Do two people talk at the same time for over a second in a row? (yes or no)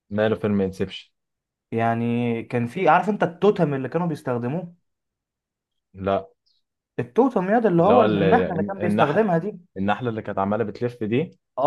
yes